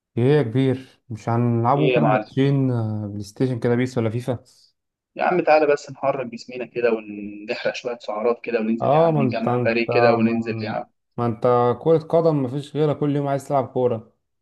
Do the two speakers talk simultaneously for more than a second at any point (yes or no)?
yes